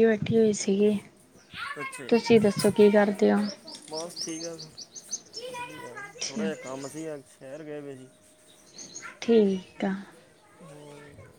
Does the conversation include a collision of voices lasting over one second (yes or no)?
yes